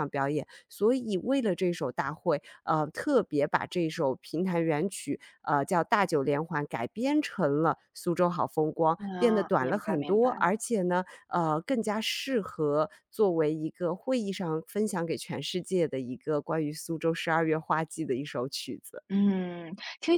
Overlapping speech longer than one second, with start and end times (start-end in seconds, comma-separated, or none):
9.0-10.4